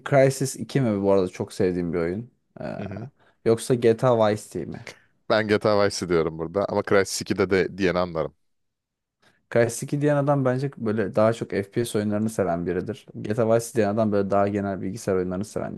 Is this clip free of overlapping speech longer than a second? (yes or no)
yes